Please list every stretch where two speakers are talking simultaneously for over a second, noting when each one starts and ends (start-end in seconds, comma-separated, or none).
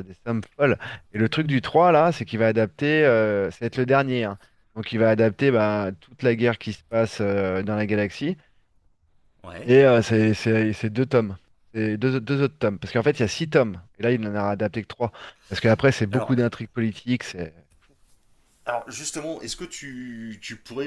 none